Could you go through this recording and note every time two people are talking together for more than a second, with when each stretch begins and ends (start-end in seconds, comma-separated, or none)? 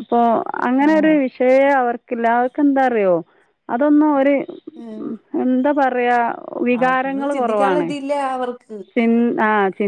none